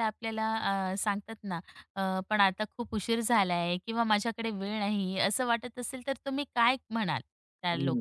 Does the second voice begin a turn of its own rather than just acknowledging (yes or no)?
yes